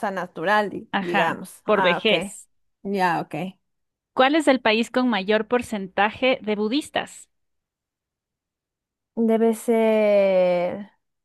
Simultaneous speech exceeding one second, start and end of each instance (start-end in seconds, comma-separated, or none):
0.9-2.4